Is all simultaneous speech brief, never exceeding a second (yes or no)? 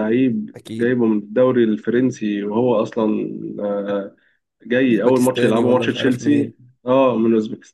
no